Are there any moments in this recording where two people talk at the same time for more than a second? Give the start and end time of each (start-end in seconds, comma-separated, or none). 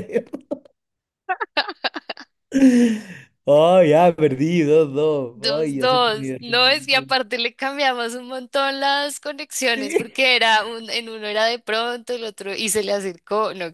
5.4-6.6